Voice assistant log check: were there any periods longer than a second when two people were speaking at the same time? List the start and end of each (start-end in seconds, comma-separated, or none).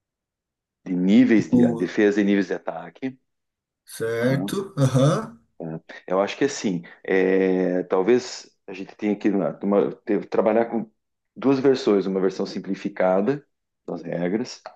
none